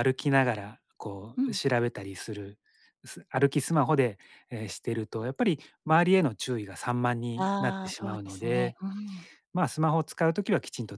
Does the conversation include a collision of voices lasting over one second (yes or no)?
yes